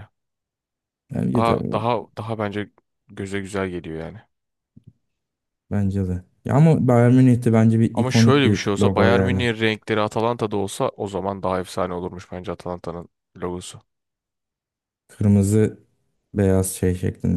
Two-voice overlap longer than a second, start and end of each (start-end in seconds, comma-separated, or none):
7.9-9.5